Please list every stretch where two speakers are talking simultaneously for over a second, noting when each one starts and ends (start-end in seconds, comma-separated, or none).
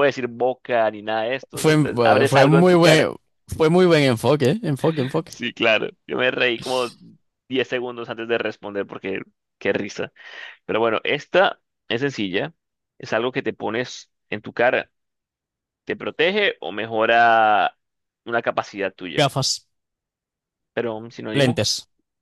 1.5-3.0